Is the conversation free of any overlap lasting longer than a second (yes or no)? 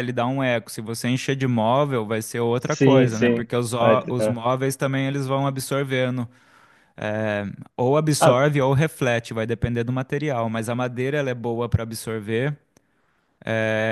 no